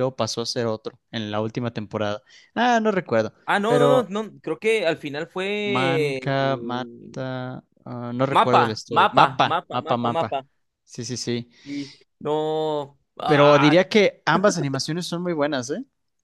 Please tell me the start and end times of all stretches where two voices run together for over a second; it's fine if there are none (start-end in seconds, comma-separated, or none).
8.3-10.4